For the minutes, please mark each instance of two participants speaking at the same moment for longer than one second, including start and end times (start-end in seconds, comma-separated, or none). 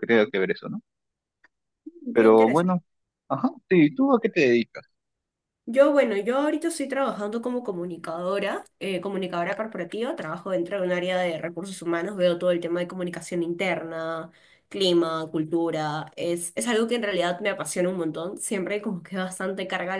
none